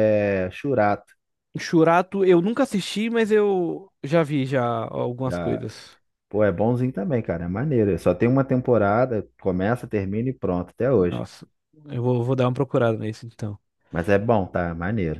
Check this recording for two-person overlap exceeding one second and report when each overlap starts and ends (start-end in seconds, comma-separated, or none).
none